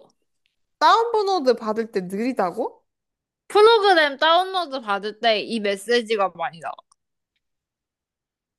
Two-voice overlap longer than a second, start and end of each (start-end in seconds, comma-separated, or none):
none